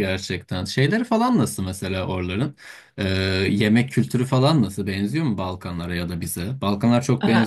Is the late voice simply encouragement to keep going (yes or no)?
no